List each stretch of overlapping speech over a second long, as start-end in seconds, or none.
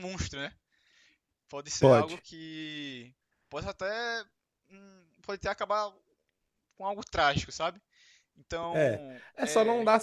none